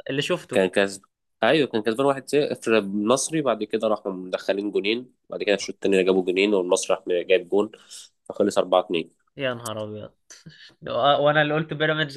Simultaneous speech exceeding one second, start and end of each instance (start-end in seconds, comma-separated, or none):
none